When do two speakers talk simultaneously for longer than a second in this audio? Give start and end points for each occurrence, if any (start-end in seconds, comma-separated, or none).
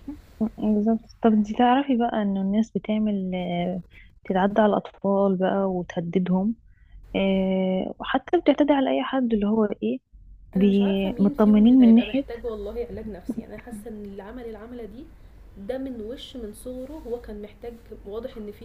10.6-12.2